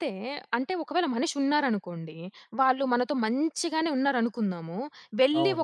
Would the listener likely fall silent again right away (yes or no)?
yes